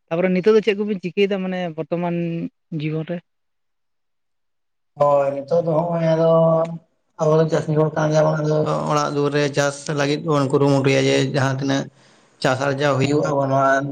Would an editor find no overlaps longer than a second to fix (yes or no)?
yes